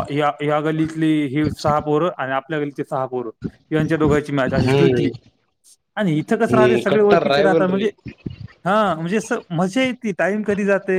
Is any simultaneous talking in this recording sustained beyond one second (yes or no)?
yes